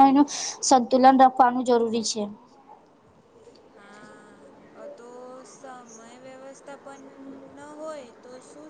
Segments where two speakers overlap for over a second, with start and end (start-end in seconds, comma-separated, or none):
none